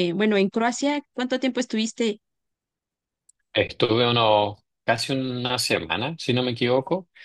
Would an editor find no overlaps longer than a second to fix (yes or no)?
yes